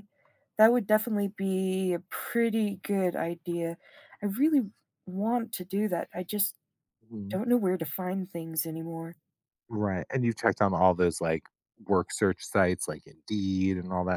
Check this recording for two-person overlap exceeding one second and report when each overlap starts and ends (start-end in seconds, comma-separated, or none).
none